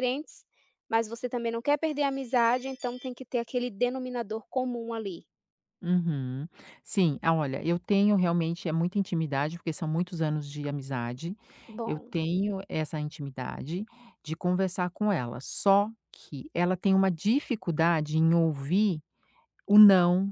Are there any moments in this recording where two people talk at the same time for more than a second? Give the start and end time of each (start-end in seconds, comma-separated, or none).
none